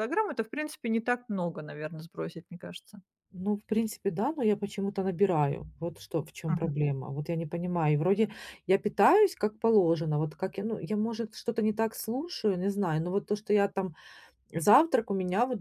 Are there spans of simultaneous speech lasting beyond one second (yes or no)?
no